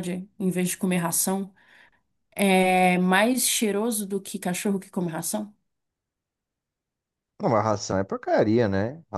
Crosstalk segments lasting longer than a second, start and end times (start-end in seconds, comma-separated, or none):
none